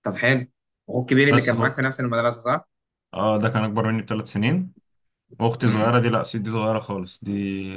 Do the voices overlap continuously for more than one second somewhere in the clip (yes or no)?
no